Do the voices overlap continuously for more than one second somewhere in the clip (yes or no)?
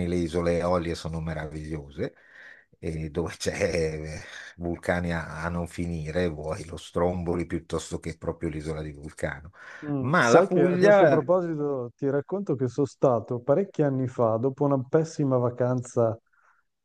yes